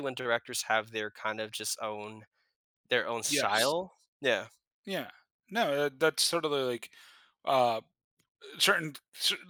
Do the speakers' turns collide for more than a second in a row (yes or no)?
no